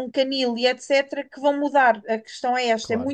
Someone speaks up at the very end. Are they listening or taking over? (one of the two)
listening